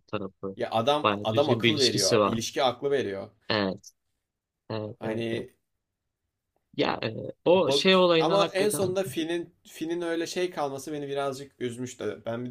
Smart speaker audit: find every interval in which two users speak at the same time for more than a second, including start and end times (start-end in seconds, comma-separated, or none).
1.0-2.4, 7.5-9.0